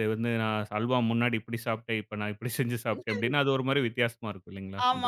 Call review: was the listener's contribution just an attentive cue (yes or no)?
no